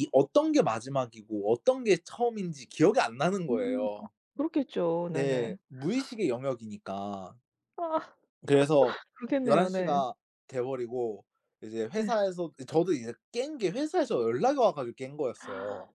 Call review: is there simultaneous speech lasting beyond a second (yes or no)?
no